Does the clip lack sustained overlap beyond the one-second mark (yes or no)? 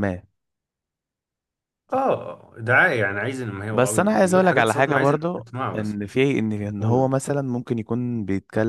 no